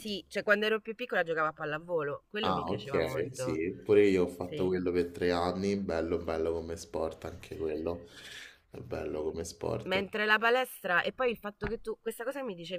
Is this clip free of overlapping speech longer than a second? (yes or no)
no